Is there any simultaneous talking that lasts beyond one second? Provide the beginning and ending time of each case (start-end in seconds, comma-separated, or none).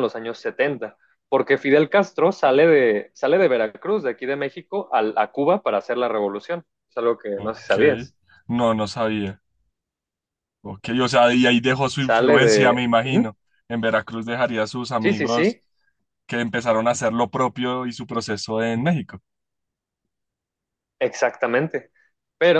12.0-13.3